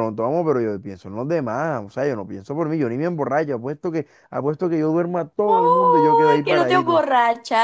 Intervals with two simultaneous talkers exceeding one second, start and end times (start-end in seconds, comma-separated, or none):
5.4-7.0